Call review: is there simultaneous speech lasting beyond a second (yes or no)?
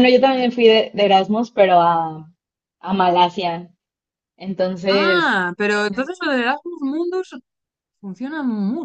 no